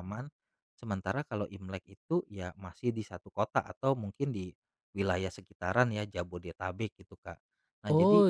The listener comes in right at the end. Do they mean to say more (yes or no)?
yes